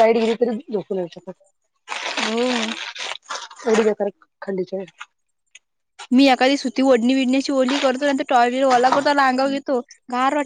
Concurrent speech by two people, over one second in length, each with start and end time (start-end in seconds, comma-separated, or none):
none